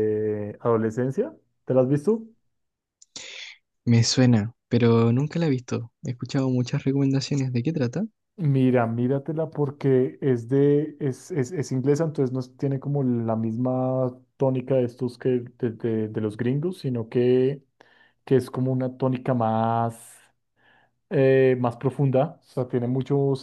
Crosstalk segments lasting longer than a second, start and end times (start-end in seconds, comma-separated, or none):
none